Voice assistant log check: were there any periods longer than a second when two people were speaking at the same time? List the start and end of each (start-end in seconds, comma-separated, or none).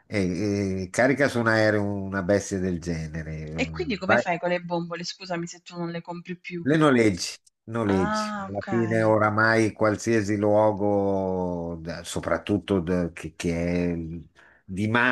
7.8-9.2